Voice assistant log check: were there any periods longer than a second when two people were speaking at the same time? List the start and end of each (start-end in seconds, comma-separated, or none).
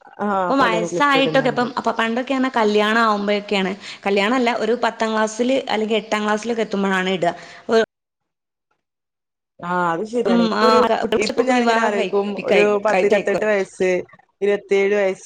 11.2-13.4